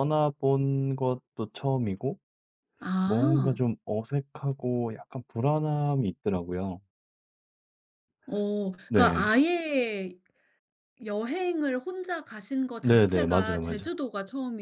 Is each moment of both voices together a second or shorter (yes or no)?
no